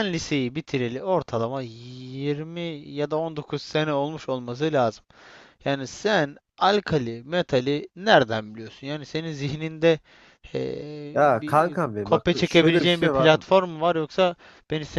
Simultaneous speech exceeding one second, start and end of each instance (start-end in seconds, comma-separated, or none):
11.1-13.3